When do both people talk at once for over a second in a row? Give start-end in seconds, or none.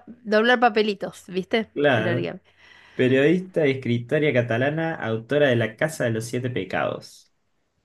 none